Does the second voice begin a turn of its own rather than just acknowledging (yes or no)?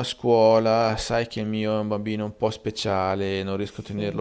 no